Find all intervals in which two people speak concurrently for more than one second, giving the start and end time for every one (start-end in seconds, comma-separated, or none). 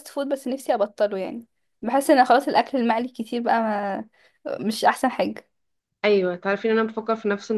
none